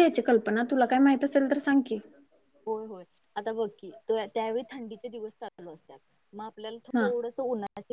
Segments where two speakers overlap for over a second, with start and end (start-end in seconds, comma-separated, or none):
none